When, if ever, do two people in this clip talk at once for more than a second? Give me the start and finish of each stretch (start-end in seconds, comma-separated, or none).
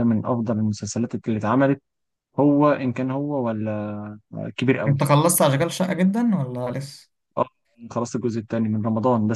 none